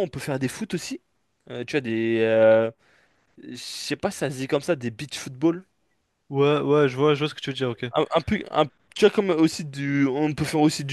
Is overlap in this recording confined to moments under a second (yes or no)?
yes